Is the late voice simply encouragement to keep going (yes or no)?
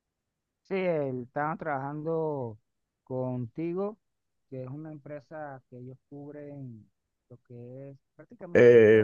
no